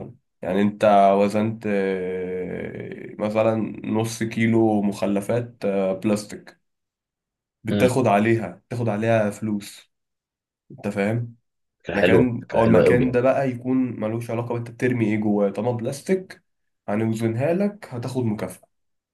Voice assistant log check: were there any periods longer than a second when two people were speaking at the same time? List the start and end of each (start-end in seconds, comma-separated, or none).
11.9-13.2